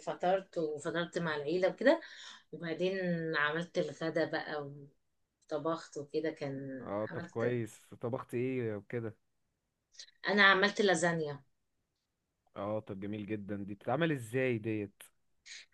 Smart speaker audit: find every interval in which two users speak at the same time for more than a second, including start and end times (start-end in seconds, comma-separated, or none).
none